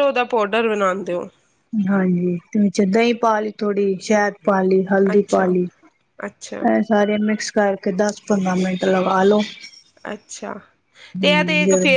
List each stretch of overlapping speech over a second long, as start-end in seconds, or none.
none